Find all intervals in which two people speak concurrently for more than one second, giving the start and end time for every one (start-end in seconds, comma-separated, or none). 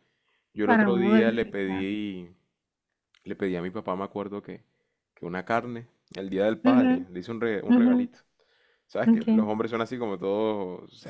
0.6-1.9